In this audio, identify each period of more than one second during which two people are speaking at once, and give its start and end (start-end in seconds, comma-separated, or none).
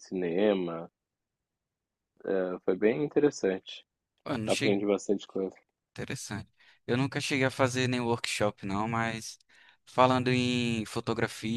none